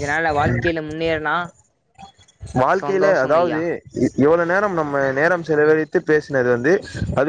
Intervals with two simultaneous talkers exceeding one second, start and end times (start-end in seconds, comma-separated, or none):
none